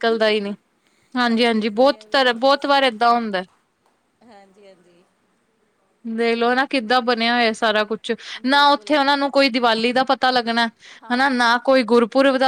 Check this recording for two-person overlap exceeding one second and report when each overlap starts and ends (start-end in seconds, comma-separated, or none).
1.3-2.9